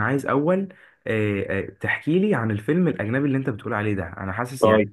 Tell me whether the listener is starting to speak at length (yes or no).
no